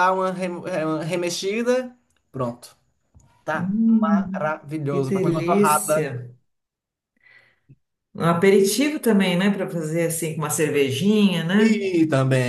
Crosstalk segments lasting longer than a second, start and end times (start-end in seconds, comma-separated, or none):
4.3-6.1